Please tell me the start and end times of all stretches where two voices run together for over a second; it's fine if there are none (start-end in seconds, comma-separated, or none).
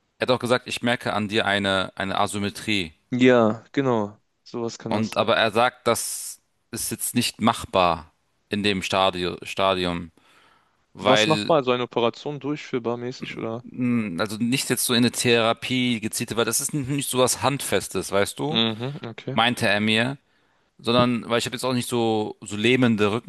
none